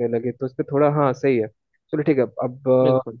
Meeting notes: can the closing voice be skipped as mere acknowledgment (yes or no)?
yes